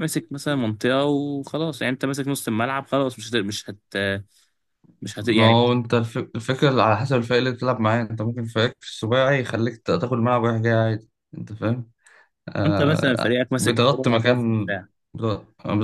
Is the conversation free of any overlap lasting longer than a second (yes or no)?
no